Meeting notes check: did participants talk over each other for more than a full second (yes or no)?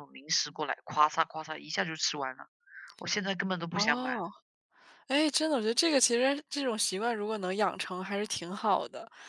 no